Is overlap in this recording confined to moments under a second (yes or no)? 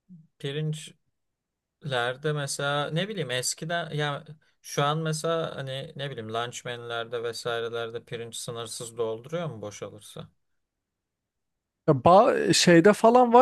yes